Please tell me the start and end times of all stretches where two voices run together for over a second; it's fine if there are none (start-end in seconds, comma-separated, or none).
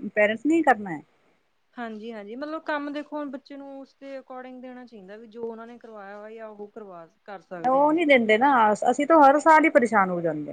none